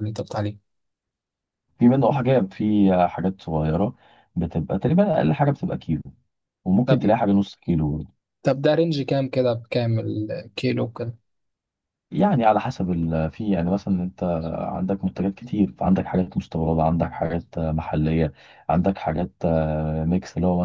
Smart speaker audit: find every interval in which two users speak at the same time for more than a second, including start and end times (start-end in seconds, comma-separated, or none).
none